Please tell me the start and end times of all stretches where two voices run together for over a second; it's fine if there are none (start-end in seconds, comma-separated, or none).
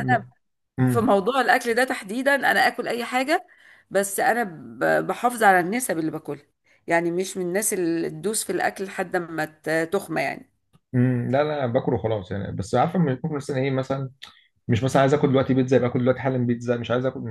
none